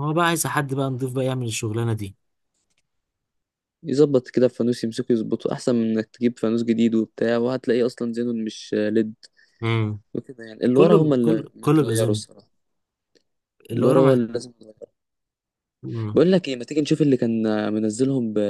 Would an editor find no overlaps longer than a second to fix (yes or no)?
no